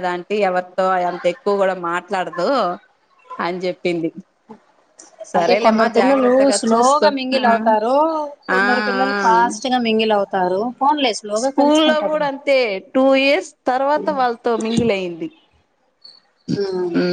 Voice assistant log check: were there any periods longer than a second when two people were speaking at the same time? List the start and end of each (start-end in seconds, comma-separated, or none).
5.4-7.5